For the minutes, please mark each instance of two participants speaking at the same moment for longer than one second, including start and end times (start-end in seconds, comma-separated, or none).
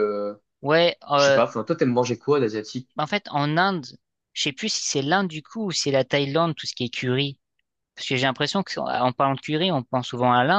none